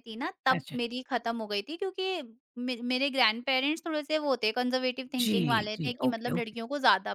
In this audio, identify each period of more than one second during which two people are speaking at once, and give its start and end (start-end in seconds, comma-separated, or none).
5.2-6.6